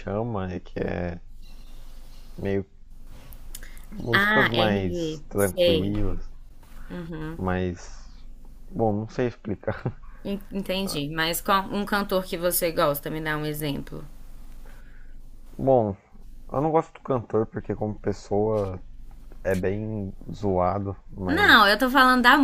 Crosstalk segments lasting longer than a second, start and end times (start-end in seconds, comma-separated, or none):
4.1-5.9